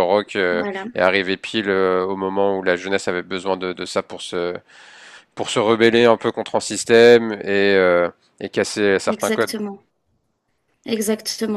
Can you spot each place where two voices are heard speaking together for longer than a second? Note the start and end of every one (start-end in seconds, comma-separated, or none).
none